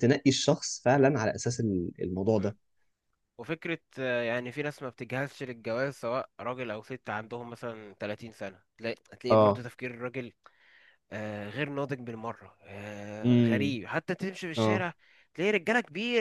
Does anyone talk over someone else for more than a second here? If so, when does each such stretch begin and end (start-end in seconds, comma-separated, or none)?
none